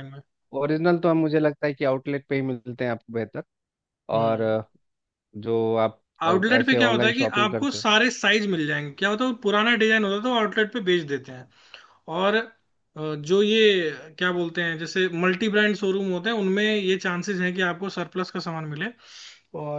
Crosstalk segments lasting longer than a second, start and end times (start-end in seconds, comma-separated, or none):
6.2-7.8